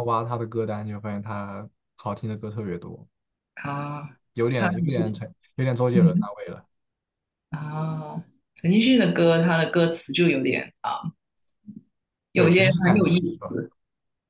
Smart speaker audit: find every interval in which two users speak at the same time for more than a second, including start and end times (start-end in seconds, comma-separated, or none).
12.3-13.6